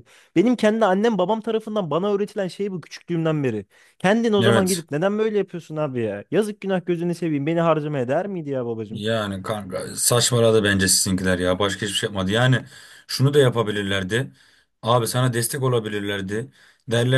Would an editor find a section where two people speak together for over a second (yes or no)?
no